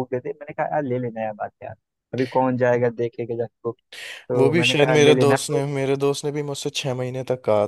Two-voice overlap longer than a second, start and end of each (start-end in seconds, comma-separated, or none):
4.4-5.6